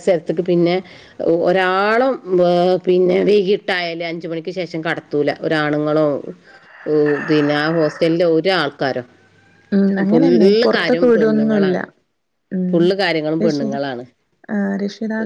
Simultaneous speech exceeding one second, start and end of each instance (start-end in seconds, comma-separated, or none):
10.1-11.8